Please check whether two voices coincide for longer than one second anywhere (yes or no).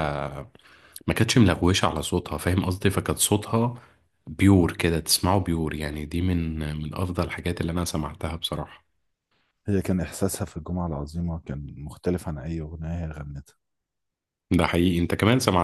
no